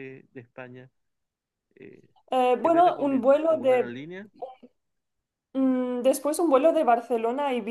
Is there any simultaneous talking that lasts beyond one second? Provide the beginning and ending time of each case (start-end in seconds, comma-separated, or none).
2.6-4.0